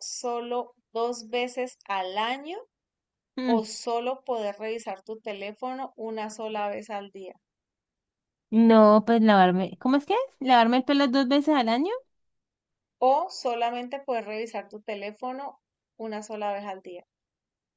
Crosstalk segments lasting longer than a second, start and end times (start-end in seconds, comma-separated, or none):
none